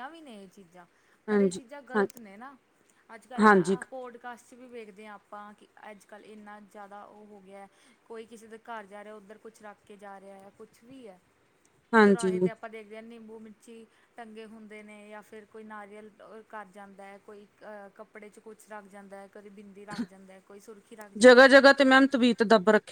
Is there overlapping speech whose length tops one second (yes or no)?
no